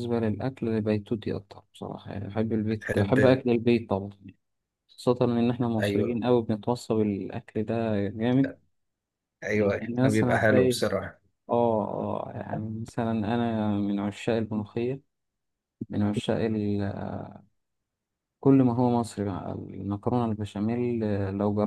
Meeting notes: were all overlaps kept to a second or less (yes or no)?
no